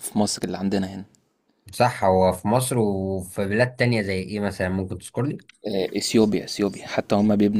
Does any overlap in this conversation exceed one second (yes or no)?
no